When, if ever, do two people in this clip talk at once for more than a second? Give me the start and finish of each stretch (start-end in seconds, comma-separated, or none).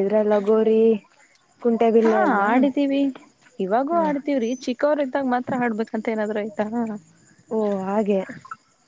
none